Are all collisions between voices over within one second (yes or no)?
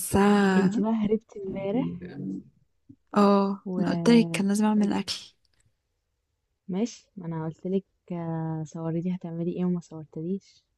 no